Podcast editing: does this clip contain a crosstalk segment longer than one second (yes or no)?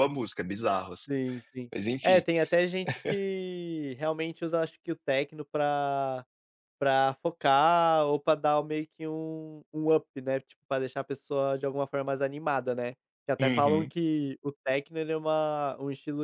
no